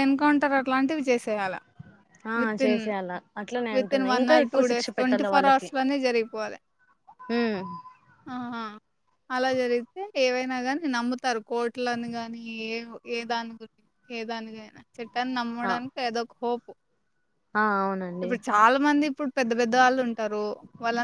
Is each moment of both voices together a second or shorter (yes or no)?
no